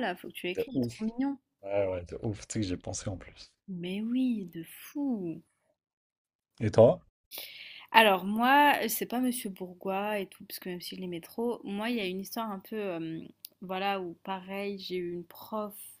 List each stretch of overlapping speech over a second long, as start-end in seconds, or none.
none